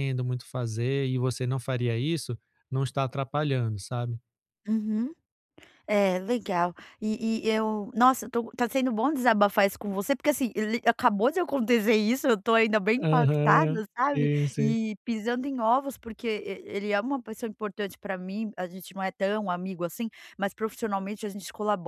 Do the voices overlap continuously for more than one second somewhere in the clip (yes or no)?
yes